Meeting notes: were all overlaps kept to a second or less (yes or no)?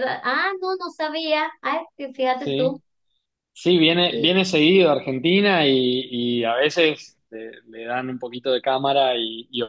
yes